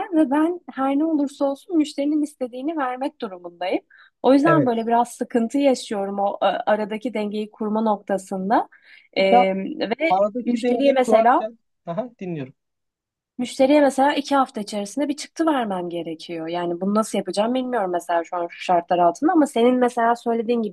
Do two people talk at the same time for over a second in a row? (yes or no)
yes